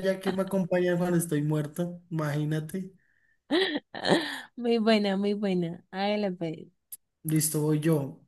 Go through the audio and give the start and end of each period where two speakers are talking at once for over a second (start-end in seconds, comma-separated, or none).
none